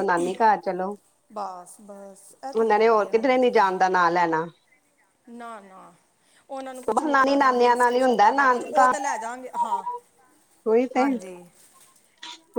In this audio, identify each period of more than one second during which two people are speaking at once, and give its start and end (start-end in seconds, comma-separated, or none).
6.9-8.9